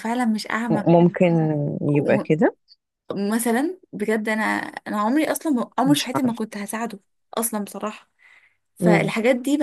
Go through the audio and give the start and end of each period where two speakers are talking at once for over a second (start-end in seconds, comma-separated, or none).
none